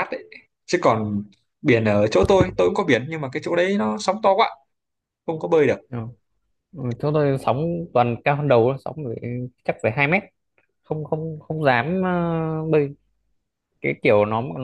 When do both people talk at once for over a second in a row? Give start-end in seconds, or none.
none